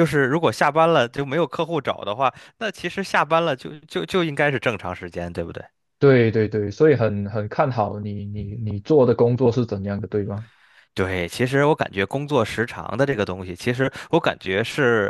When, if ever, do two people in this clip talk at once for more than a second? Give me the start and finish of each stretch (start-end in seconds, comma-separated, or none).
none